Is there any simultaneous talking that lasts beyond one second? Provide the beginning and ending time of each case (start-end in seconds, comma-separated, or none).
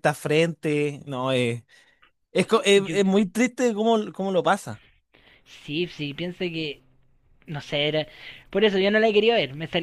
none